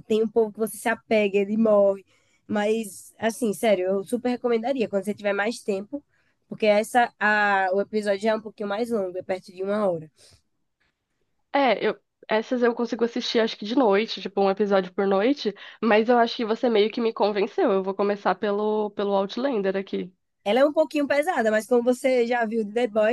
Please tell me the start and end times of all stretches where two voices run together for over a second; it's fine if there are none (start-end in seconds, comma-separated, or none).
none